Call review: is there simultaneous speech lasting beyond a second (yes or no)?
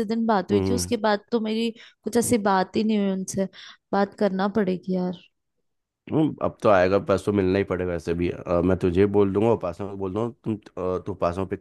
no